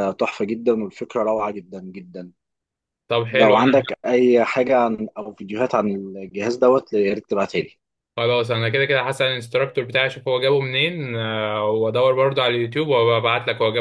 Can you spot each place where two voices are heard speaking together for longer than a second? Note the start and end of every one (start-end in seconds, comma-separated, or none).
none